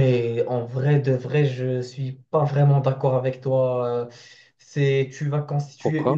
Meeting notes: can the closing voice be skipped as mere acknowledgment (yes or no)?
yes